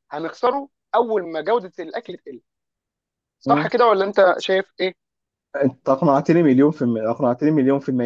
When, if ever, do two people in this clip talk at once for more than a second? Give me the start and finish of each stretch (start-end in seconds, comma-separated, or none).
none